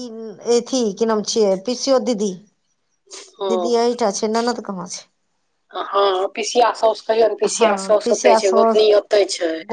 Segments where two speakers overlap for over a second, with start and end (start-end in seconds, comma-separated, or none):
7.5-8.8